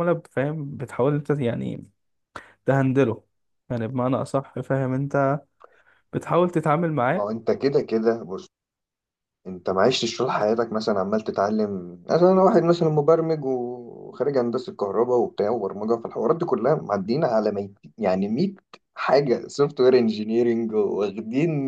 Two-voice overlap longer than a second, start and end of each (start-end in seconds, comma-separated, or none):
none